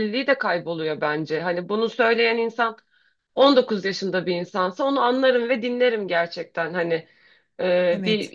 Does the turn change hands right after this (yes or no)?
no